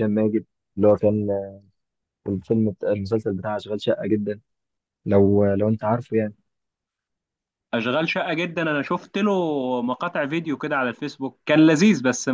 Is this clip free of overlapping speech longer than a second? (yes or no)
yes